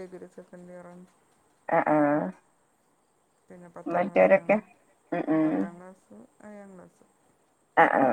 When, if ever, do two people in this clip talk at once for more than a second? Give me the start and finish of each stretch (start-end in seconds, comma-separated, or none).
none